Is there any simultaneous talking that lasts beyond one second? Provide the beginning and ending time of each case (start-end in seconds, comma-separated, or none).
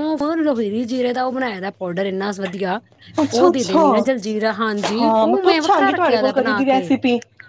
5.0-6.9